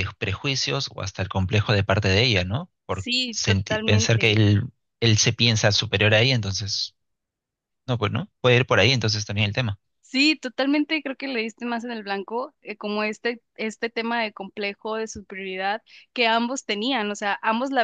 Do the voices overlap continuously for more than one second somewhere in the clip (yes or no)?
yes